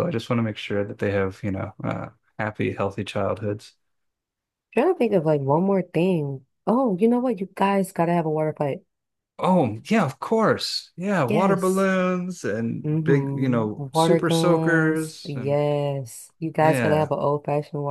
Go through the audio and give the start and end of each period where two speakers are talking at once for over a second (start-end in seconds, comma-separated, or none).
12.8-15.6